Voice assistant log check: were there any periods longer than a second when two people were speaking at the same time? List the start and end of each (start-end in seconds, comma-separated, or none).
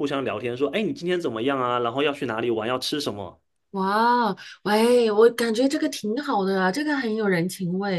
none